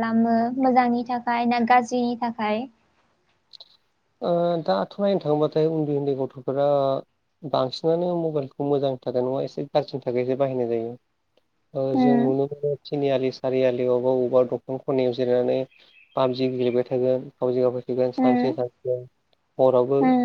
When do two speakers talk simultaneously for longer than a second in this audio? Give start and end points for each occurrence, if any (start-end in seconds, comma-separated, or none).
none